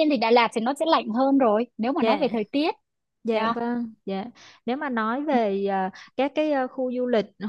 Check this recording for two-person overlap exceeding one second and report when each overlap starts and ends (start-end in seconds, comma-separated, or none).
none